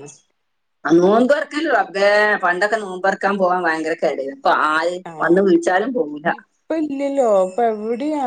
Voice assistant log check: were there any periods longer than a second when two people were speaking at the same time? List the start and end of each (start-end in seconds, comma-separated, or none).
none